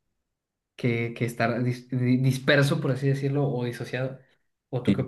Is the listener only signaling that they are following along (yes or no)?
yes